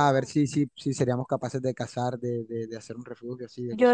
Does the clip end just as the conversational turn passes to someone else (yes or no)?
yes